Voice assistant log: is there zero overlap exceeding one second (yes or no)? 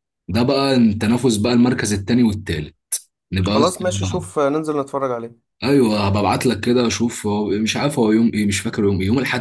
yes